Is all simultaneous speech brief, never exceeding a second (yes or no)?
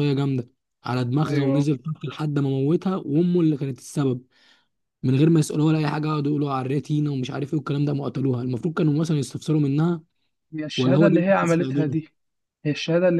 no